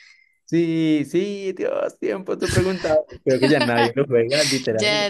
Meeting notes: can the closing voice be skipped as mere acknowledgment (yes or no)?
no